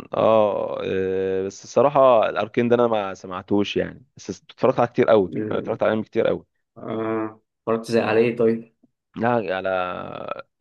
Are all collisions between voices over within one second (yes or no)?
yes